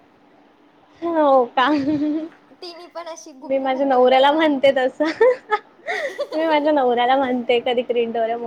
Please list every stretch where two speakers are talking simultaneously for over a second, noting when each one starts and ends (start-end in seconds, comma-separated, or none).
3.5-4.7